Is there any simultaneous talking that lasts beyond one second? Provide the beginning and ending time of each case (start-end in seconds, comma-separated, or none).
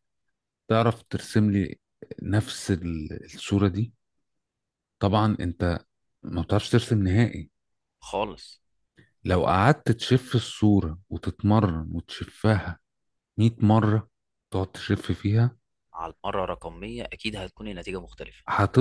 none